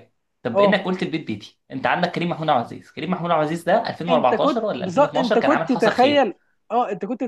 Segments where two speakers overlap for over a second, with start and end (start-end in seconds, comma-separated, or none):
4.1-6.3